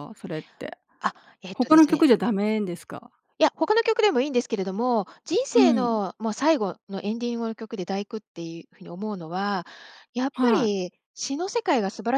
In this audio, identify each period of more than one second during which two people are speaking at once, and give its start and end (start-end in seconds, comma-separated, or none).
none